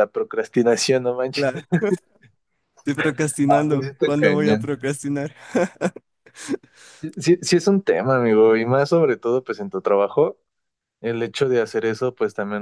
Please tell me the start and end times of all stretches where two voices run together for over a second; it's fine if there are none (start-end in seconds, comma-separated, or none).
3.5-4.7